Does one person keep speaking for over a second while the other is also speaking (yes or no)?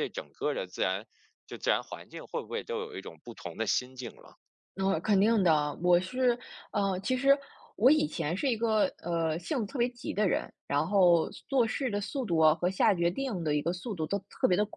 no